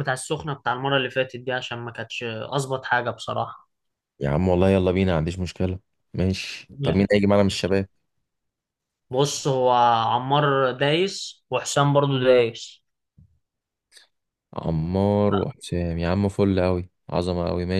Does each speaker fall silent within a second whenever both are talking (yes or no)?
yes